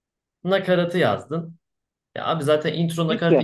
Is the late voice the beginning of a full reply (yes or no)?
no